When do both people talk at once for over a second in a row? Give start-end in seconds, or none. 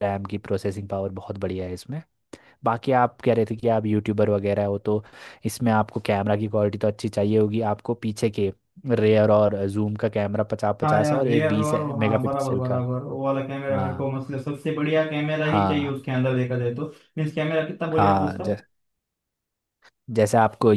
10.8-12.8